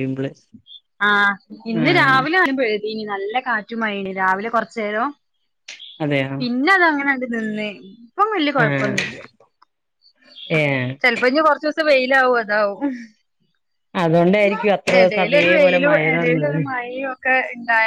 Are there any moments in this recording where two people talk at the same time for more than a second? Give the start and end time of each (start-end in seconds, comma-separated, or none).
15.0-16.6